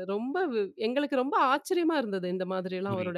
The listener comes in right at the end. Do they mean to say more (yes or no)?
yes